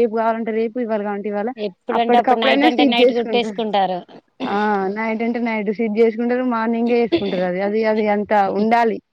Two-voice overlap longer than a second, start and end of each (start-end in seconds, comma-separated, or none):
2.0-3.6